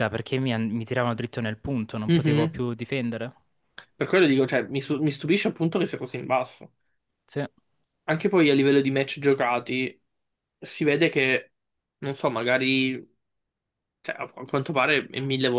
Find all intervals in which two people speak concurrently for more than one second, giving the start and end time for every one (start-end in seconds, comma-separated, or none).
none